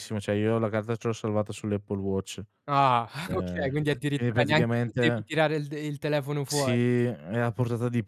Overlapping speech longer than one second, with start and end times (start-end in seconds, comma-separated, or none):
3.2-5.3